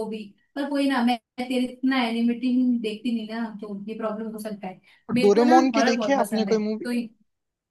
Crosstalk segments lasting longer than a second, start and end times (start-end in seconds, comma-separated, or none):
5.2-6.9